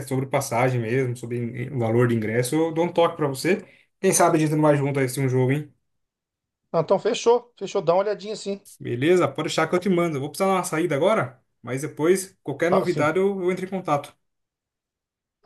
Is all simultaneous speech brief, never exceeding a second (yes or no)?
yes